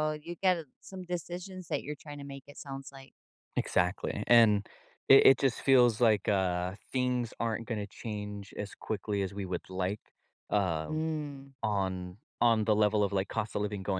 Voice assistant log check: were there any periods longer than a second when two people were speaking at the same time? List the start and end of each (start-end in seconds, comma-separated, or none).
none